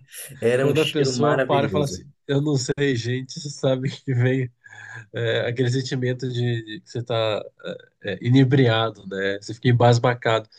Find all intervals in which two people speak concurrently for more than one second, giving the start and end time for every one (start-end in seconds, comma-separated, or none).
0.6-2.0